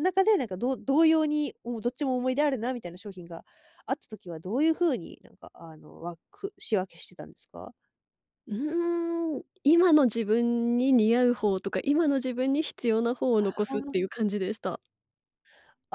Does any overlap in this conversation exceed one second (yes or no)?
no